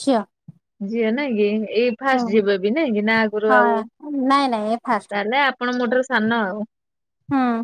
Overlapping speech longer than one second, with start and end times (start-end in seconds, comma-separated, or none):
none